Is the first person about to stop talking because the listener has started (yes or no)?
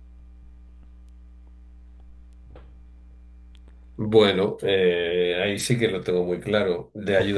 no